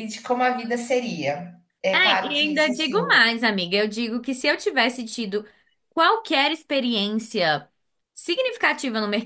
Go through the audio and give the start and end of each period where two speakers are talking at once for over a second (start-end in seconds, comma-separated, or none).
1.9-3.2